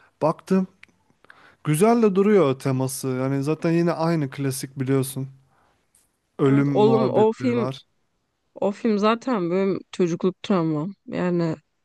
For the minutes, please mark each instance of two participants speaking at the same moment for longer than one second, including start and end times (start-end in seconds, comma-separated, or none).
6.4-7.7